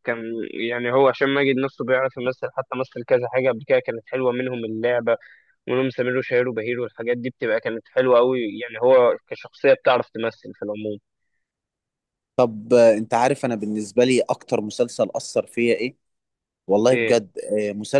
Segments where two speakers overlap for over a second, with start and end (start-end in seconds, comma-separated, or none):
none